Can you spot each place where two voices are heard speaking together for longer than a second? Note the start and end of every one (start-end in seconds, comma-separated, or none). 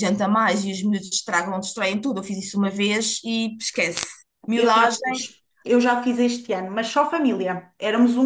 none